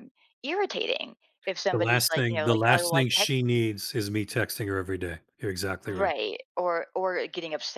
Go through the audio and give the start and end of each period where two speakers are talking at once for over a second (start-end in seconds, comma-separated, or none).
1.7-3.6